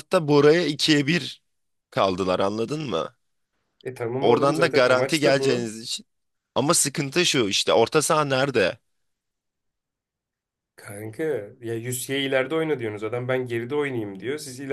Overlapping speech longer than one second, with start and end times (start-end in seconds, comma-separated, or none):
4.2-5.7